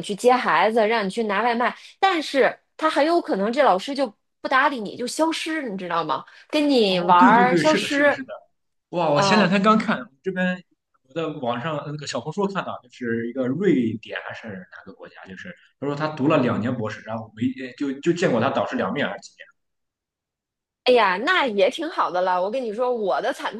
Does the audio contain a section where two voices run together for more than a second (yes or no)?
yes